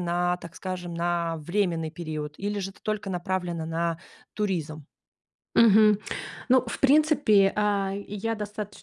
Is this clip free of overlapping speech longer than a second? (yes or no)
yes